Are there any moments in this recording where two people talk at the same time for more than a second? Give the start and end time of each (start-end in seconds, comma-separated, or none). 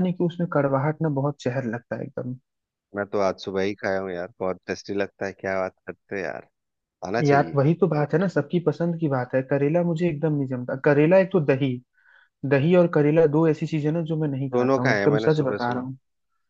14.5-15.9